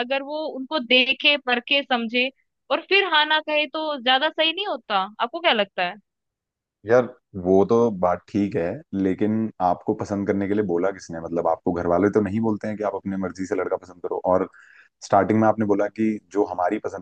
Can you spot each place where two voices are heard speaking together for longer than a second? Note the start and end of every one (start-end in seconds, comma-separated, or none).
none